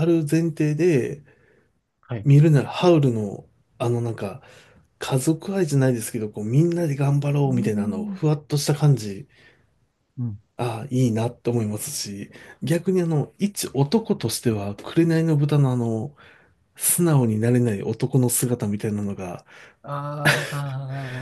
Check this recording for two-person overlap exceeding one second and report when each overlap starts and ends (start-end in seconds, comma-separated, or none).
none